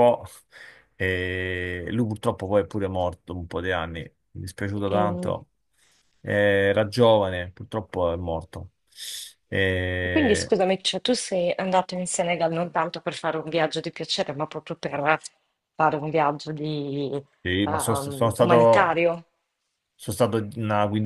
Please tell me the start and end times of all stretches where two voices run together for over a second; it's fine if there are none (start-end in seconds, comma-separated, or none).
17.6-19.0